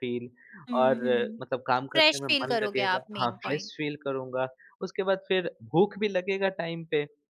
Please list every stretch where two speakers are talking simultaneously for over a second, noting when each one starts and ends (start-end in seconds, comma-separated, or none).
1.9-3.7